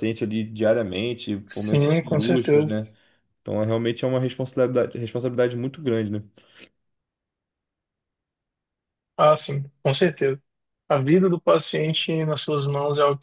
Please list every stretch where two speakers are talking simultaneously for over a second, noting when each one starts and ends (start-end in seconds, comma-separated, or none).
1.5-2.8